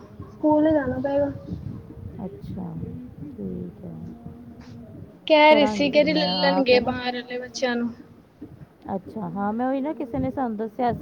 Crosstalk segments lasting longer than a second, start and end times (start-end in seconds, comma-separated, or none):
5.5-7.0